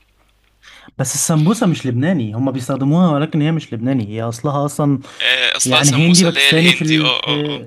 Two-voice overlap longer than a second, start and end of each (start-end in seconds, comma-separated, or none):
5.6-7.1